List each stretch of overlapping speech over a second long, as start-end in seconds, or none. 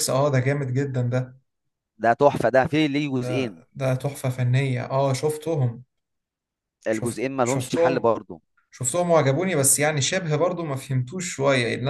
6.9-8.1